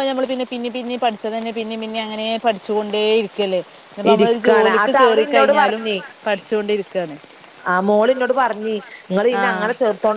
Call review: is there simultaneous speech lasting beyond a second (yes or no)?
yes